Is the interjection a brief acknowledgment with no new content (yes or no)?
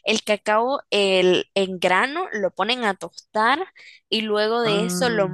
yes